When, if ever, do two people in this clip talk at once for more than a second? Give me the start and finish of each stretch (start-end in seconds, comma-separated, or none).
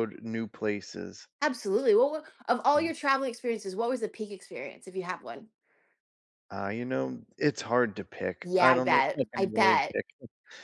8.4-9.9